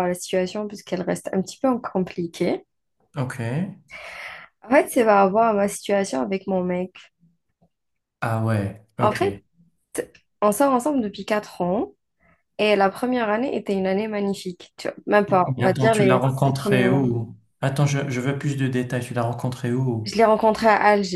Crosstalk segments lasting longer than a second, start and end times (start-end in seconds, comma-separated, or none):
15.3-17.0